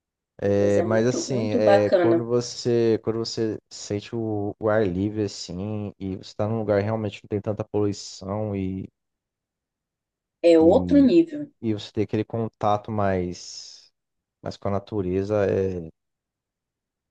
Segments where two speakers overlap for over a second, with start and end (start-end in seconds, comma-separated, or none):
0.6-2.3